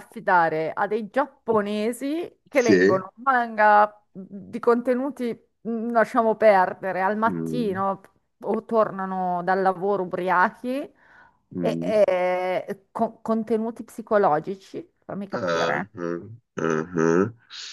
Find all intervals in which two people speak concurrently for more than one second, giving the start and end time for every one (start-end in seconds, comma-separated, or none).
none